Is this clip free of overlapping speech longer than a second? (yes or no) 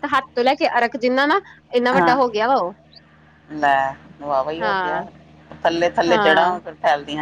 yes